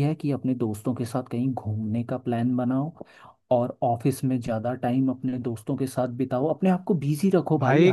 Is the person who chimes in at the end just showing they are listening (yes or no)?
no